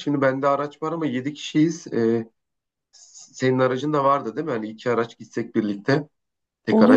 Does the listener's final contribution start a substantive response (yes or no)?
yes